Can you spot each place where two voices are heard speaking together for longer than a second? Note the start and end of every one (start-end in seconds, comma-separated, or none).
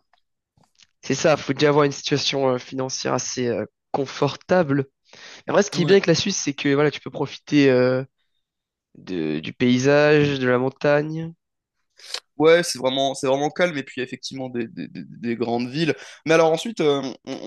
none